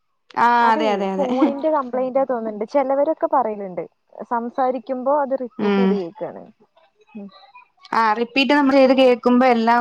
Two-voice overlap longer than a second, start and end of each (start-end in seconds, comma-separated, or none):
none